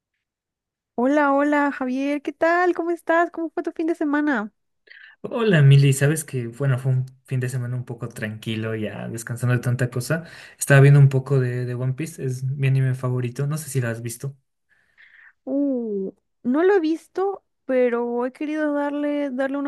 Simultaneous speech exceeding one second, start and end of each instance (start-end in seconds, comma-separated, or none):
none